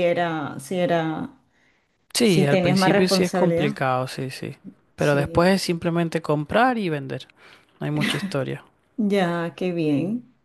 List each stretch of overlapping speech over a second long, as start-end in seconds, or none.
2.2-3.7